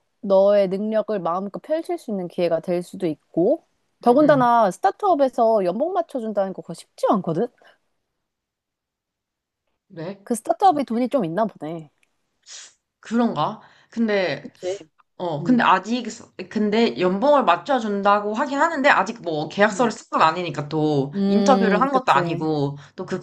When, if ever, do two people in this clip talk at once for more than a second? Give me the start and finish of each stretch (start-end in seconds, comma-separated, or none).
21.1-22.5